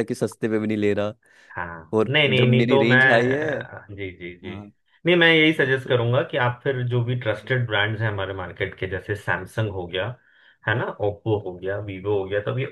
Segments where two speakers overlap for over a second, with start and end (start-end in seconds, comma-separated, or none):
2.0-3.5